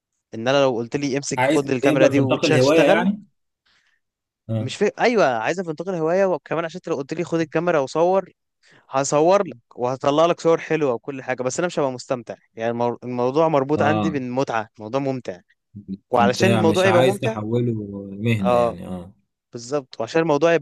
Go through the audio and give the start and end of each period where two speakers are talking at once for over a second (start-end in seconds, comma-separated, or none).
1.4-3.1, 16.1-17.4